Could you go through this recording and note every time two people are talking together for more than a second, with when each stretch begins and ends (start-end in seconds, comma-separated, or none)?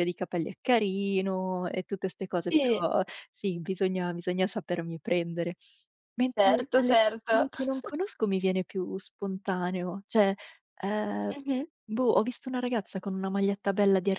6.2-7.5